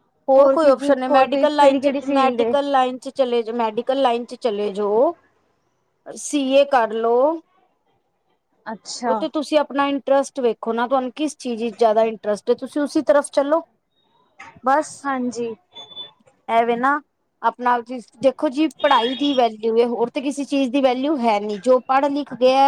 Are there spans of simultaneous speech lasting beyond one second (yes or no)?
yes